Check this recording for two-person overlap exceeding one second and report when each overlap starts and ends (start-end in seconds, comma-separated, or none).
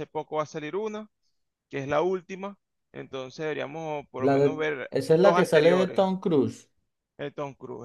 4.2-6.0